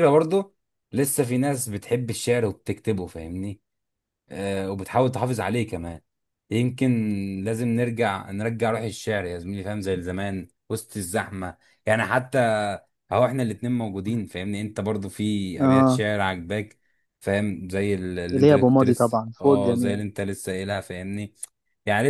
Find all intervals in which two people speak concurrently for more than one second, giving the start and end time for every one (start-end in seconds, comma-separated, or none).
18.4-20.0